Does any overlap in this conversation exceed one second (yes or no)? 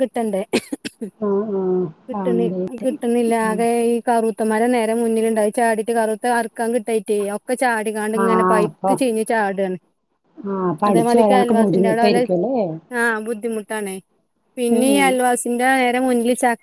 yes